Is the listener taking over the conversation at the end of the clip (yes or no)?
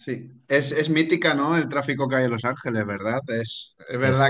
no